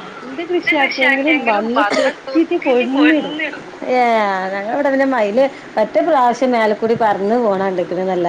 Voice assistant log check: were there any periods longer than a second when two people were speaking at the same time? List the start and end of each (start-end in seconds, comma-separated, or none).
1.0-3.4